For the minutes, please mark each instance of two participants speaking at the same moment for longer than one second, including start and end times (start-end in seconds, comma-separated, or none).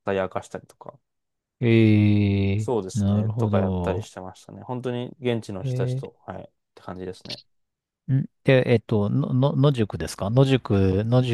2.6-4.1